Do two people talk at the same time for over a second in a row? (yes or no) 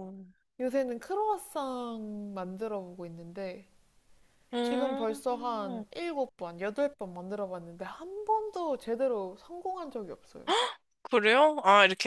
yes